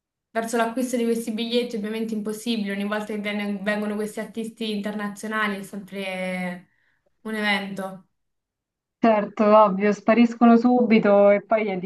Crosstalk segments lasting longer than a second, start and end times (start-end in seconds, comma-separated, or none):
none